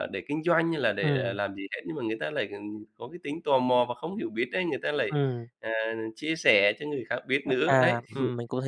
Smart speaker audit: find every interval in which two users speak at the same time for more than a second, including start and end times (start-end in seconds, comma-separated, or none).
none